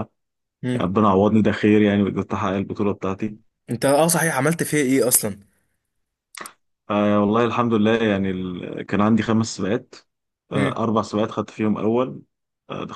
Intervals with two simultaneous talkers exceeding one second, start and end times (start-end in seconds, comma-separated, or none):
none